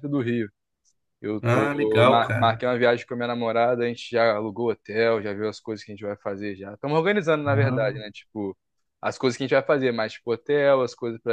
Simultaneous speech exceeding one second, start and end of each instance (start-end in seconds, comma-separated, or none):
1.4-2.6